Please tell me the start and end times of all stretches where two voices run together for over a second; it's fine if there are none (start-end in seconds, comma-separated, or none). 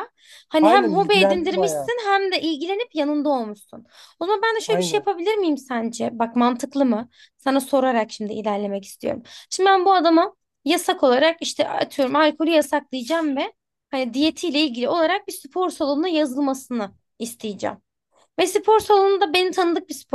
0.6-1.9